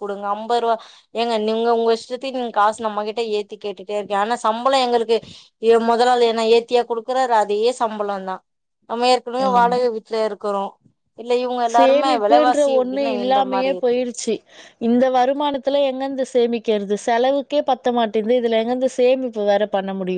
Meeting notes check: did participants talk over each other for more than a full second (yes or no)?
yes